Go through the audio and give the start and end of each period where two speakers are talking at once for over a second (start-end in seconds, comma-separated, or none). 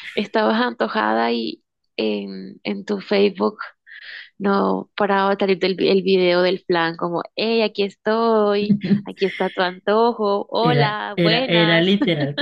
10.6-11.9